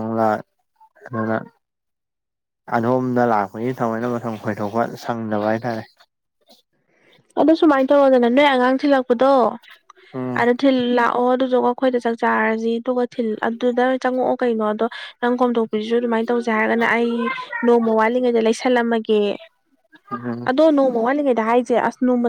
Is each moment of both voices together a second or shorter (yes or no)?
yes